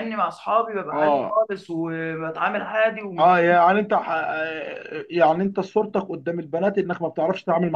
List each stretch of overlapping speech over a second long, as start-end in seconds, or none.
none